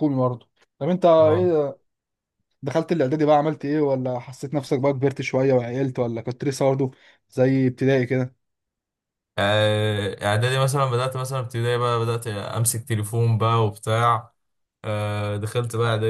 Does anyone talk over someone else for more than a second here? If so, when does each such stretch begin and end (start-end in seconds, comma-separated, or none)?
none